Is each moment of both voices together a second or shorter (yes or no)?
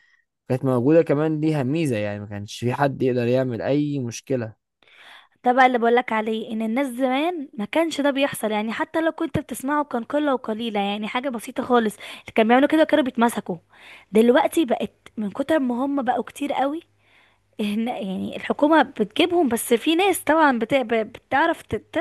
yes